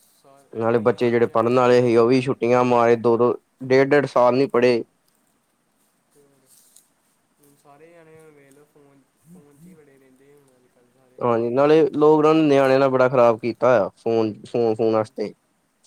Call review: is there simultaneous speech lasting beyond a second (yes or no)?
yes